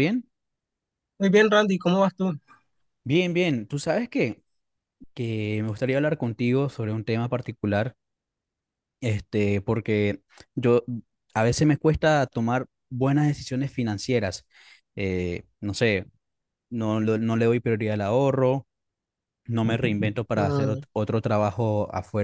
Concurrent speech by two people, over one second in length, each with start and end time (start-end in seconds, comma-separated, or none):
none